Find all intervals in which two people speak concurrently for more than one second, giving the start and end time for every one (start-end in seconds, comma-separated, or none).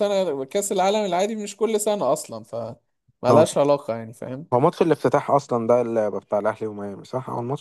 none